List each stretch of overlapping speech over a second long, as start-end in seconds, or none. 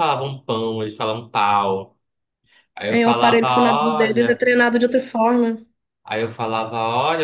2.9-4.5